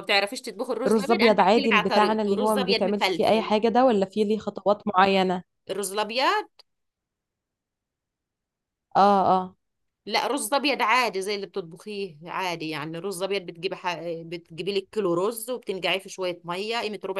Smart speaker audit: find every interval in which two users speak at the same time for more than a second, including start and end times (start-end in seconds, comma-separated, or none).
0.9-3.5